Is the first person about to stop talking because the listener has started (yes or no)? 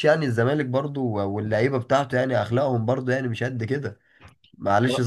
no